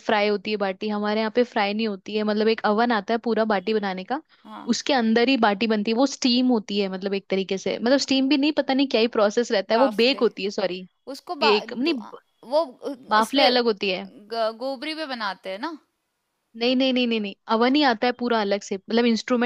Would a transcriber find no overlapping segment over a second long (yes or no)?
yes